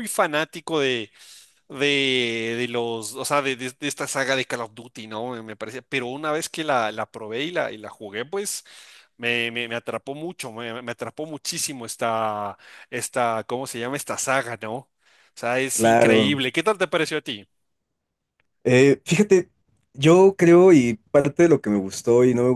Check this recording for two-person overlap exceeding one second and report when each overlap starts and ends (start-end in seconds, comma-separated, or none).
none